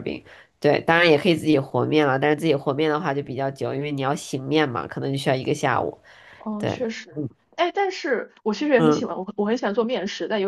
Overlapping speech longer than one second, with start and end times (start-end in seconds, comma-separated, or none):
none